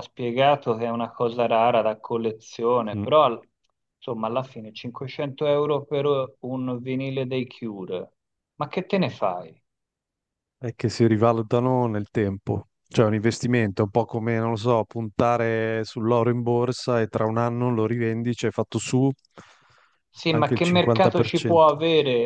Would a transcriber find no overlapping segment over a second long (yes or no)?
no